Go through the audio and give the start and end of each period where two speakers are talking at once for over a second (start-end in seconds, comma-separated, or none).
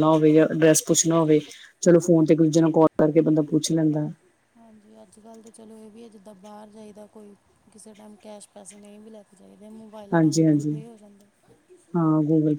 none